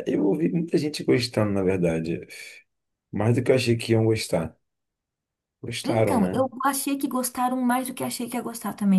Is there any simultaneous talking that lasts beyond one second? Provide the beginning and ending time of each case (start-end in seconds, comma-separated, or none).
none